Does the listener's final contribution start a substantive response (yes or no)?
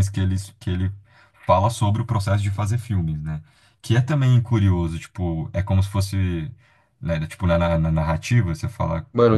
yes